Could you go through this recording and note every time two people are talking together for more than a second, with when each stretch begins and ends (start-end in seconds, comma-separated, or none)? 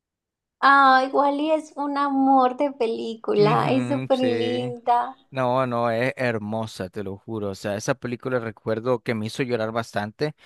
3.4-4.8